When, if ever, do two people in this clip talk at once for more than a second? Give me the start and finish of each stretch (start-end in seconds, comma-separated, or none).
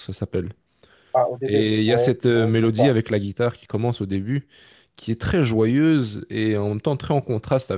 1.4-2.9